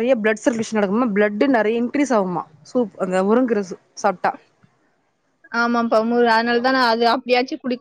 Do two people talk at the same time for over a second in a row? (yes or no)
no